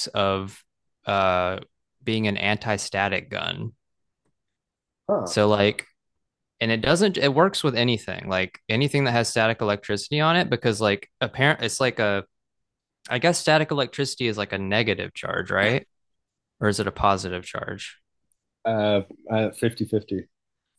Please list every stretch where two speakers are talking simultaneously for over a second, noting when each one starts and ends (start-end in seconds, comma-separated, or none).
none